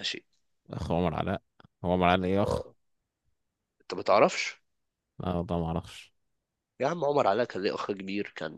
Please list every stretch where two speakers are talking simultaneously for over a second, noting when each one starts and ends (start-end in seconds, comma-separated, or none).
none